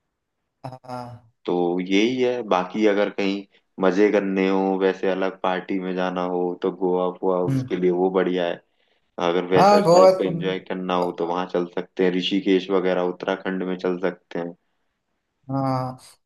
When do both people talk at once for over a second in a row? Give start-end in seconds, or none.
none